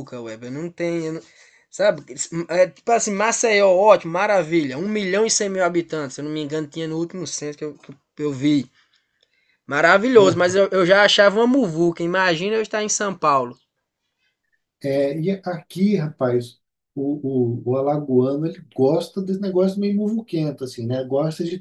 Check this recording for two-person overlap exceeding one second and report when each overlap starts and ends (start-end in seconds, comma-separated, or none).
none